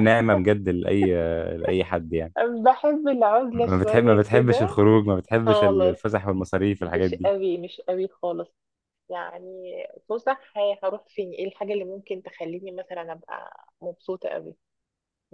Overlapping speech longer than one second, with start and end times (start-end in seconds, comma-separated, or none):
3.5-4.8